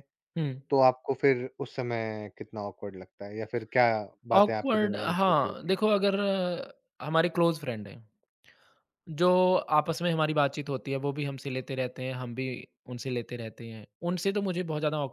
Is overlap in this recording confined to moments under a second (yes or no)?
no